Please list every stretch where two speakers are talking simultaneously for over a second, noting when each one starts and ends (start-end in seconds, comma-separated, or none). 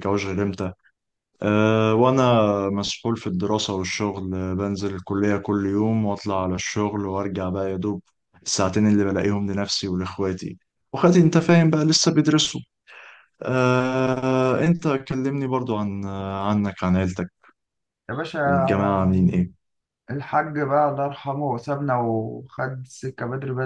none